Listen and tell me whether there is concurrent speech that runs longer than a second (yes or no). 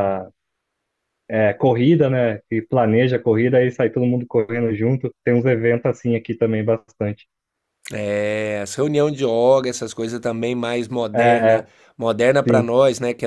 no